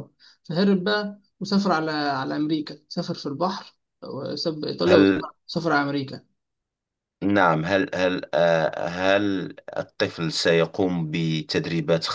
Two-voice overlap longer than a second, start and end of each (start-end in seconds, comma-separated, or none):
none